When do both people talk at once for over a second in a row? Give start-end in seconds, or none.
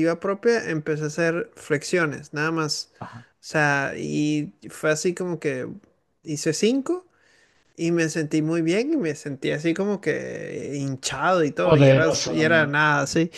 11.6-12.9